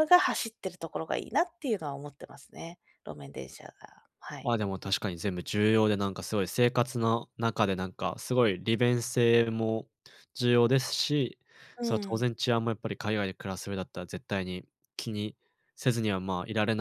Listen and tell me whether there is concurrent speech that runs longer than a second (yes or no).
no